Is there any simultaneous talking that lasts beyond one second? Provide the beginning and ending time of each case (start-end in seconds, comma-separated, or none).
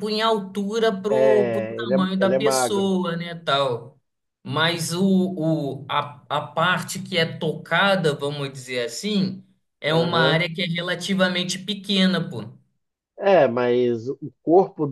1.1-2.9